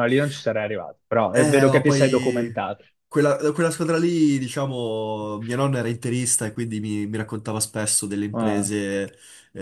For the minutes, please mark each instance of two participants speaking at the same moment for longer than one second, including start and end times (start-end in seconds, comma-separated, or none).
1.3-2.5